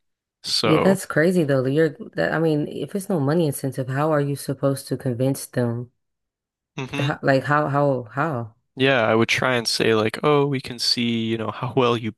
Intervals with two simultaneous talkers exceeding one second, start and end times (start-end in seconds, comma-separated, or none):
none